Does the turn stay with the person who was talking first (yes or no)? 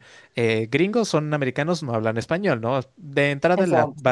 yes